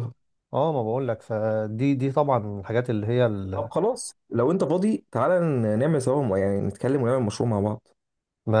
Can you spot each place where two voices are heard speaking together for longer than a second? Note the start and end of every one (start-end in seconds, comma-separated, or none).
none